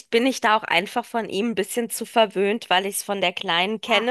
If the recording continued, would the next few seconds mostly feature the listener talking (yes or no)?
no